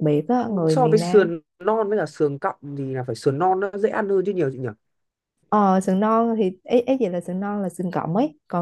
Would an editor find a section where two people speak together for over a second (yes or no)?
no